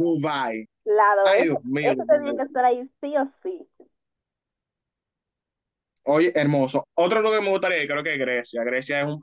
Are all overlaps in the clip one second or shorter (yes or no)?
no